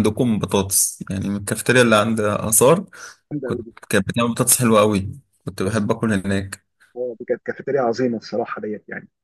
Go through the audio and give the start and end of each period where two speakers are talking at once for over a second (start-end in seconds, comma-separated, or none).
none